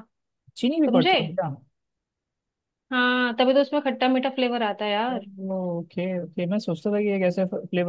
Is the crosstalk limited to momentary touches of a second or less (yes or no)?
yes